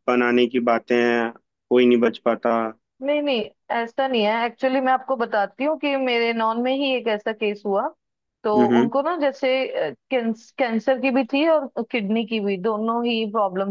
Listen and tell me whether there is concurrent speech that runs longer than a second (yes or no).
no